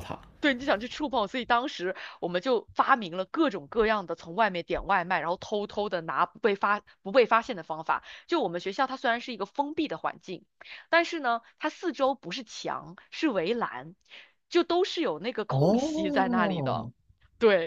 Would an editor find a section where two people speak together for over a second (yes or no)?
yes